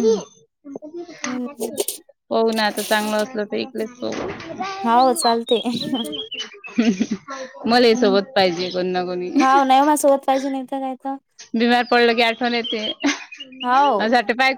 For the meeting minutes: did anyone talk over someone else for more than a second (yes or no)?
no